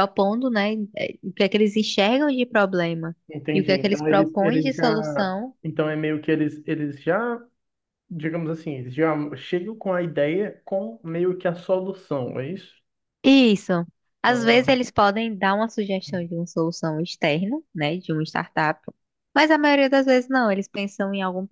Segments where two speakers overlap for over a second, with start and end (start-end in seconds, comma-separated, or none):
3.5-5.5